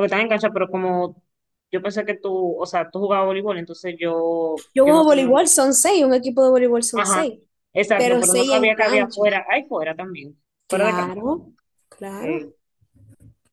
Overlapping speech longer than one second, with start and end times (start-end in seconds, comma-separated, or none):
8.0-9.2